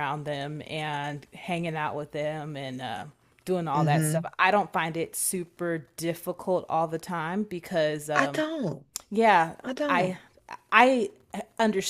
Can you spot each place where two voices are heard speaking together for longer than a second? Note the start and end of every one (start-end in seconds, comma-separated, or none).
none